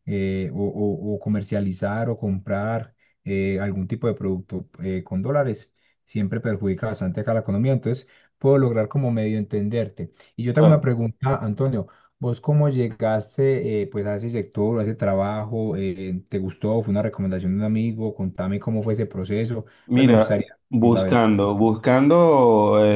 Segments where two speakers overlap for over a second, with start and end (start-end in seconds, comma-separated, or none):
19.9-21.2